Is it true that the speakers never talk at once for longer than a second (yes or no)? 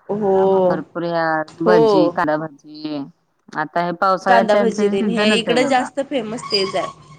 no